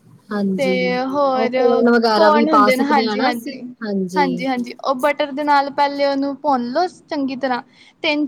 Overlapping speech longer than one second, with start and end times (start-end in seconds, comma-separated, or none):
2.1-3.6